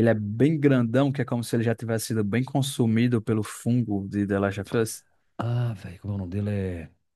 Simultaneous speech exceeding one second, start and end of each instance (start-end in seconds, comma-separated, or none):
none